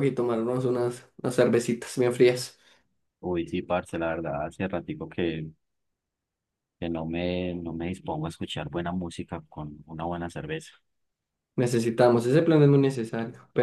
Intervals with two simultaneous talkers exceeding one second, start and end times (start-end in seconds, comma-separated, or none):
none